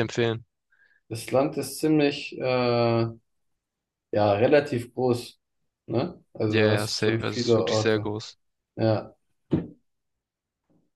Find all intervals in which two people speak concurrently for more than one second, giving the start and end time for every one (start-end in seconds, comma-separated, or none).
6.5-8.1